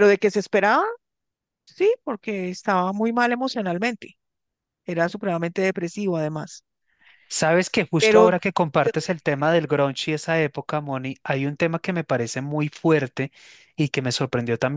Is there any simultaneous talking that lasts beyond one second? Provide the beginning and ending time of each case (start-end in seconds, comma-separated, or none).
8.0-9.4